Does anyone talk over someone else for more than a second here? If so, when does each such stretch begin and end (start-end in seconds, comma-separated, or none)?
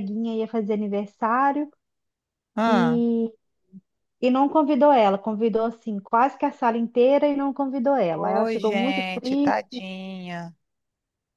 8.1-9.8